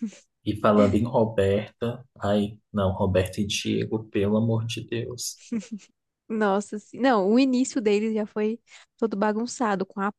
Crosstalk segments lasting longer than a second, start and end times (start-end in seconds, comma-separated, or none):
none